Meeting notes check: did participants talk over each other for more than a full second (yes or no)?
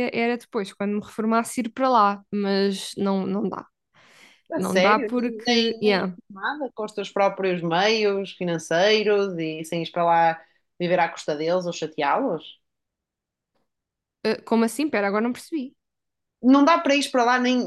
yes